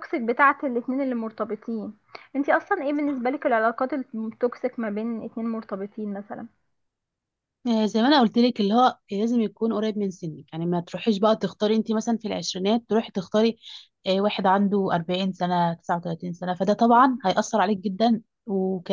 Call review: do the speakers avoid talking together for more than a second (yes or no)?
yes